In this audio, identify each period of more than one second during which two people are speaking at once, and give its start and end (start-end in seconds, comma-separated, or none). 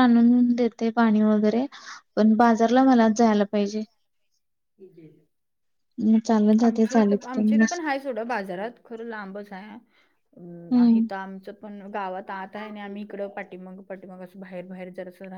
none